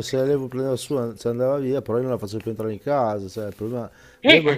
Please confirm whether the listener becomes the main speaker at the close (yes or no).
no